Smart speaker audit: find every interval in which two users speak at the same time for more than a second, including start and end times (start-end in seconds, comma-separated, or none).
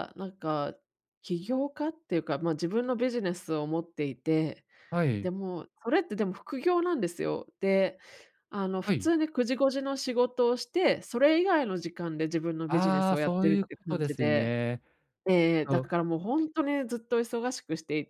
12.7-14.5